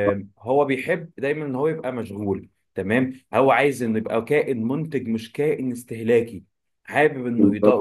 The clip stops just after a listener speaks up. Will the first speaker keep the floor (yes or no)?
yes